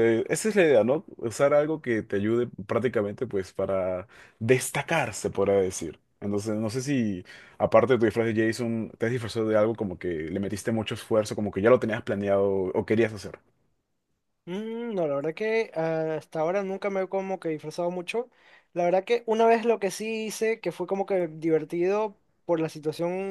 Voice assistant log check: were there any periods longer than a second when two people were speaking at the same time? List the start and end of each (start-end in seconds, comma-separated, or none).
none